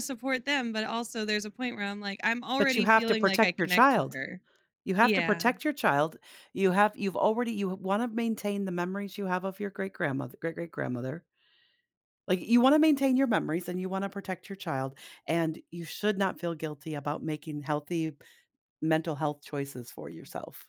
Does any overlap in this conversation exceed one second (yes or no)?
yes